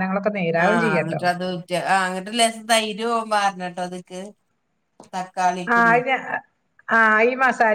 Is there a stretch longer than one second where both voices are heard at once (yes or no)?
no